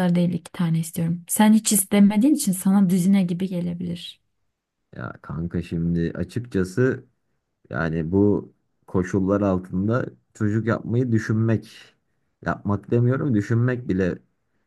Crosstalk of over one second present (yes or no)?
no